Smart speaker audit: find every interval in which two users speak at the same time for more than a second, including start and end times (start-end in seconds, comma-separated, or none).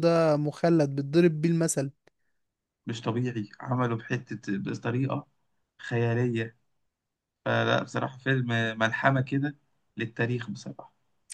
none